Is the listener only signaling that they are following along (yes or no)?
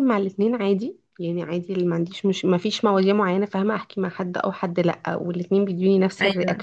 yes